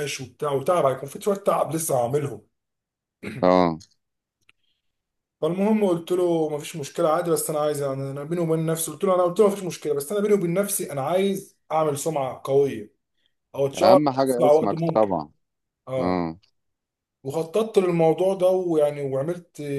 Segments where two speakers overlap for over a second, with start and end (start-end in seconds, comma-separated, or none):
13.8-15.1